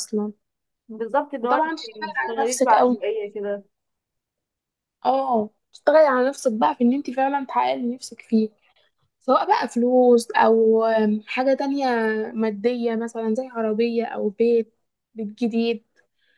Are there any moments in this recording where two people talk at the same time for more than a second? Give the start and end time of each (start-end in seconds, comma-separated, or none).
1.4-3.0